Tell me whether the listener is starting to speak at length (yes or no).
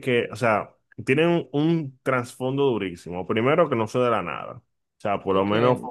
no